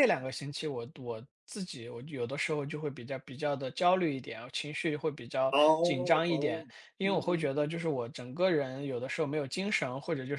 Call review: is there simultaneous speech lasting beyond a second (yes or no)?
yes